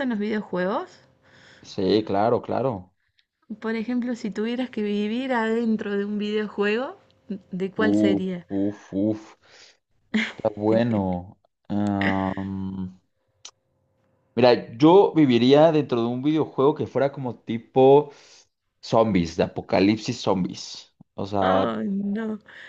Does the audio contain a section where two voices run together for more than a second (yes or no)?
no